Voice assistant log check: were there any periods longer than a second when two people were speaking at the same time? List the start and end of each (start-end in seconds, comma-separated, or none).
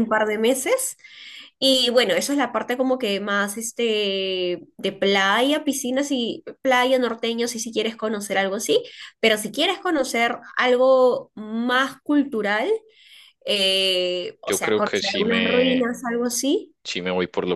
14.4-15.9